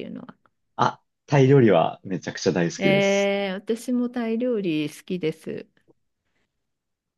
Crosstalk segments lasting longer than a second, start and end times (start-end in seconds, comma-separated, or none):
none